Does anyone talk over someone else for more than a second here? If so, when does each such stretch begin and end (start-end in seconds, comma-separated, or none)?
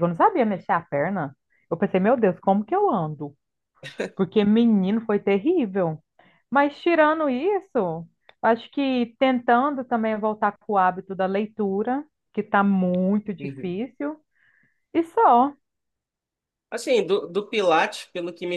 none